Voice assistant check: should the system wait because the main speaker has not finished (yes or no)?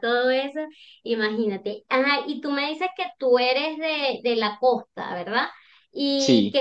yes